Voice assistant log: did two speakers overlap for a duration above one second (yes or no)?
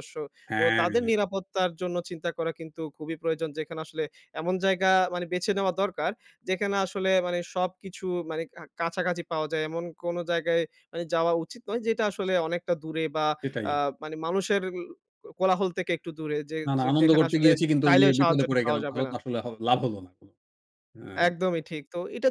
yes